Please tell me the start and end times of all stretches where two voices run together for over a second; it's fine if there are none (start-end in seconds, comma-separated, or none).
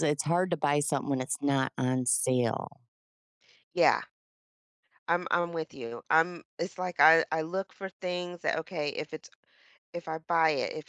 none